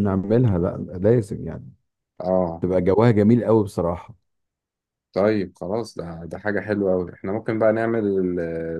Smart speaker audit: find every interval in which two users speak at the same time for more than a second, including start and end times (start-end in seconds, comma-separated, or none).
none